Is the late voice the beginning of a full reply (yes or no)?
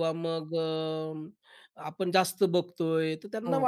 no